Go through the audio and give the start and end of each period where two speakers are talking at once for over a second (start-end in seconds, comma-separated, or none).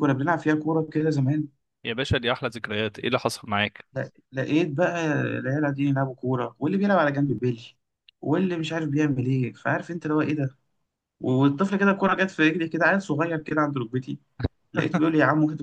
none